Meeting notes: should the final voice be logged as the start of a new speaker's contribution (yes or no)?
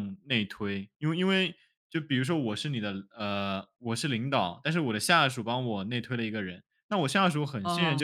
no